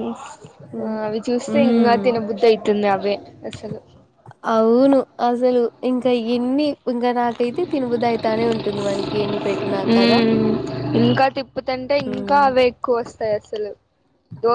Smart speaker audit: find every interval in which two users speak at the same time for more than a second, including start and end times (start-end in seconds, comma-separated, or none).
none